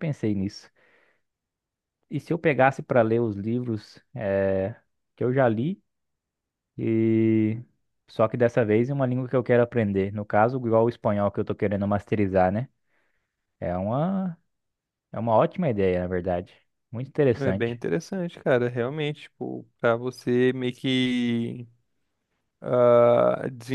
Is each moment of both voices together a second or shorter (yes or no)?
yes